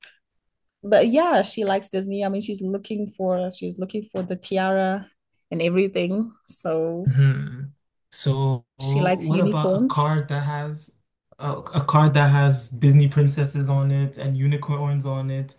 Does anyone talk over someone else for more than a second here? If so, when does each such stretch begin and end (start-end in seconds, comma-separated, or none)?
8.8-10.2